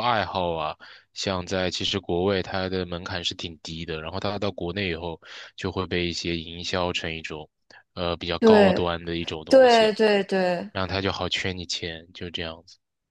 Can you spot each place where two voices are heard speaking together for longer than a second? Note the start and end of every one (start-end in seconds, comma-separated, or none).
none